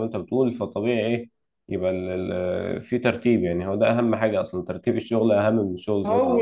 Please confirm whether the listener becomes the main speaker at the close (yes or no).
yes